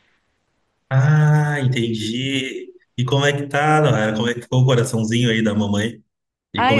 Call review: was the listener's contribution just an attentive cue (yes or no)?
no